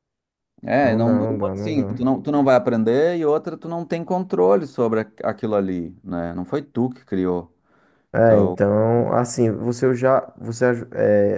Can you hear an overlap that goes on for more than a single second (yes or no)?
yes